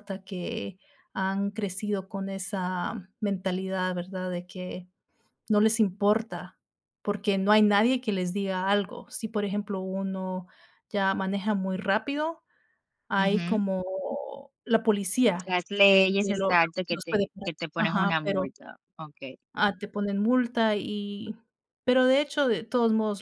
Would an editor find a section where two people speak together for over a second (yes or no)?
yes